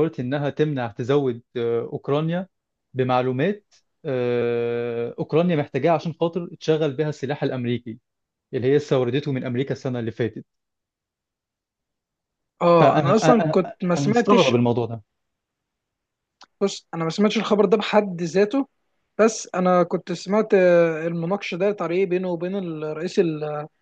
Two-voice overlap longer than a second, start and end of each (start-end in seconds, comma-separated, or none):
12.8-14.5